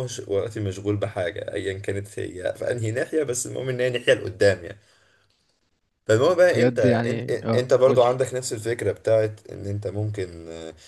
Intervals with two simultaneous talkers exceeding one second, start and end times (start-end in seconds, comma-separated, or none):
6.1-8.1